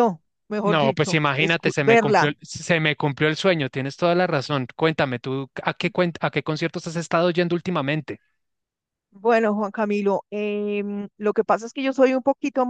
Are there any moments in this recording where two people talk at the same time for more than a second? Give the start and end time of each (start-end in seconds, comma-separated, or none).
0.6-2.3